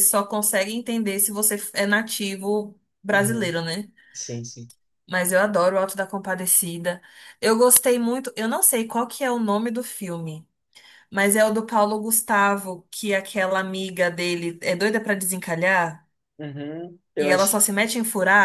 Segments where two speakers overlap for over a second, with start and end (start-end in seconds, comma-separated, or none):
none